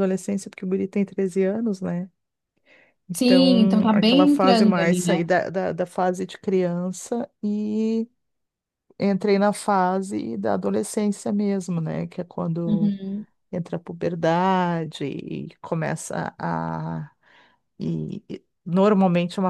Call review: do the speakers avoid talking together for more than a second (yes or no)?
no